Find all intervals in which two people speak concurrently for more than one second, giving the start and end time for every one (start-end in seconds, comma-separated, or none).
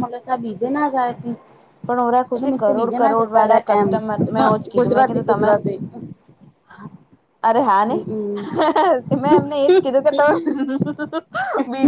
1.8-3.9